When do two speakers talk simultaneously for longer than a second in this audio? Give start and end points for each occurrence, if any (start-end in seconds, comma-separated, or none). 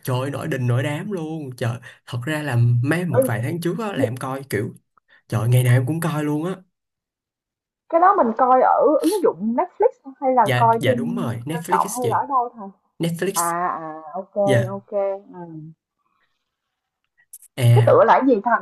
10.4-12.2